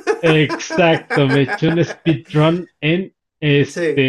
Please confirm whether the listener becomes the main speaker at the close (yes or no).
no